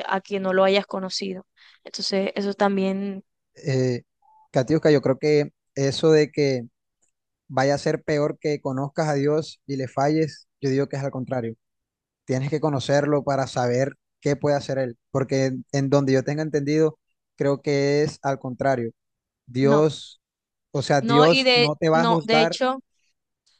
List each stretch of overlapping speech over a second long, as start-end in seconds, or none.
21.0-22.6